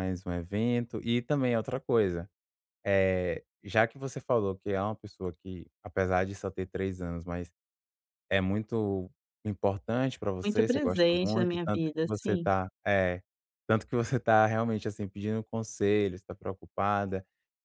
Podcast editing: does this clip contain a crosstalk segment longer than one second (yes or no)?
yes